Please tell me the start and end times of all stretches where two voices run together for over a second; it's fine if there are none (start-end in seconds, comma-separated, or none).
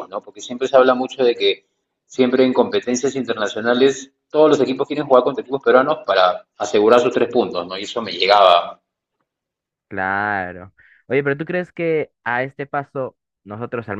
none